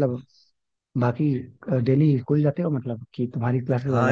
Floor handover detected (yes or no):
yes